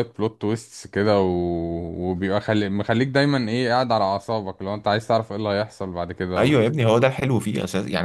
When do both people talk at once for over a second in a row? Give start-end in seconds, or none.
none